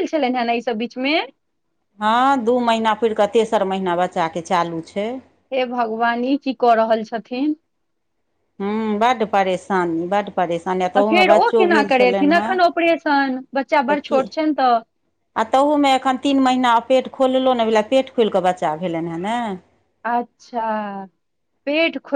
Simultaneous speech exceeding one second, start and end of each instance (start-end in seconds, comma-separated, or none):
10.8-12.5